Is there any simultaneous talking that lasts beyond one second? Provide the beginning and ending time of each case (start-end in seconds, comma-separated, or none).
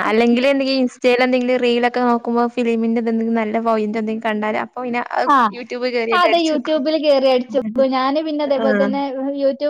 none